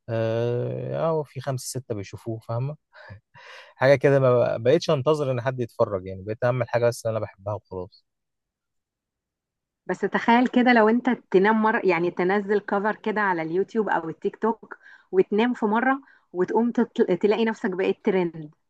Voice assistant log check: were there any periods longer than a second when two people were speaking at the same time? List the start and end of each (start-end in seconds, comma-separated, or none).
none